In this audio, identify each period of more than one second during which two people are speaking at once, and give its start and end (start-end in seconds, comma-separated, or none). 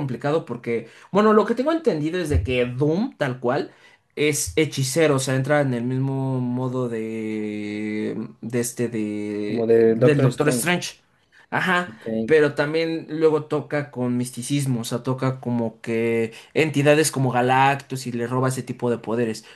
9.4-10.8